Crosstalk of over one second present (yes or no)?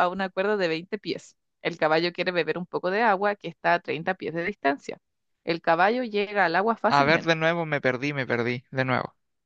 no